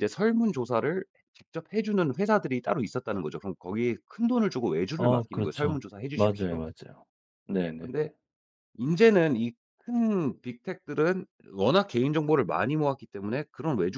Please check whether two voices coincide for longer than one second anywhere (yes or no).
yes